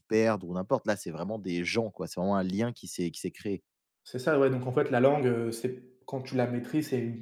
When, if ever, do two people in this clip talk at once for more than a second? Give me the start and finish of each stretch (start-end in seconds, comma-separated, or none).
none